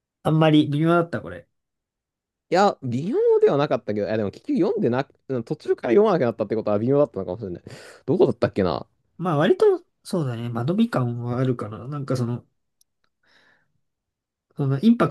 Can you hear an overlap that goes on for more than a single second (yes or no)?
no